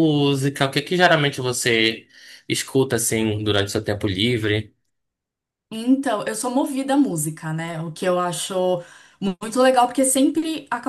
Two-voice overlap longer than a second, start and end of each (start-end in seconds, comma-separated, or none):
none